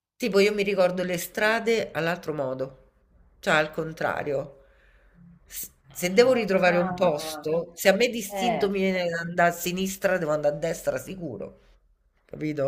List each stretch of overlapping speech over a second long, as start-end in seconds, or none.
6.2-7.6